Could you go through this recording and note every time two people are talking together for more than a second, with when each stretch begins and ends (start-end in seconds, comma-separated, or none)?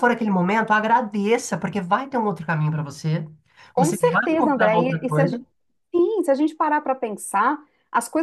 3.8-5.4